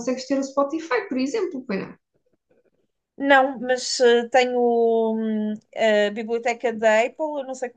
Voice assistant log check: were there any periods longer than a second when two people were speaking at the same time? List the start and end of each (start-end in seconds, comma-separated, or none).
none